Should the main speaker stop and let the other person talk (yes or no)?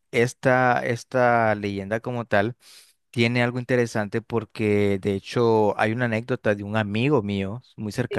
no